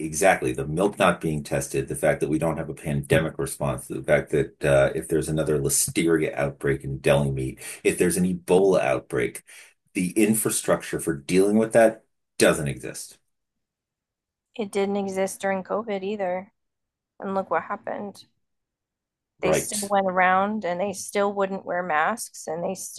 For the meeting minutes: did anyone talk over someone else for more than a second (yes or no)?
no